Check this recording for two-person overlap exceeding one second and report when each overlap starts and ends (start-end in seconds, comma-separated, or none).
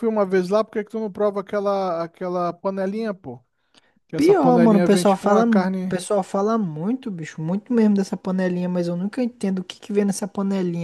4.2-5.9